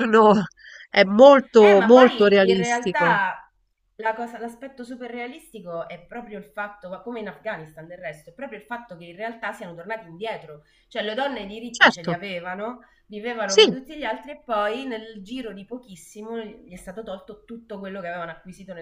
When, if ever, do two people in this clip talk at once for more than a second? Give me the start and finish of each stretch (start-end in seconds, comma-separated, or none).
1.8-3.2